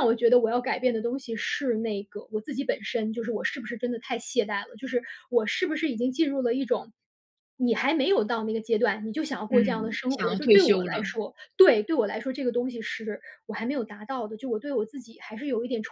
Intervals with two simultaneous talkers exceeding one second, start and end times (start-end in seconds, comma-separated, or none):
9.5-11.1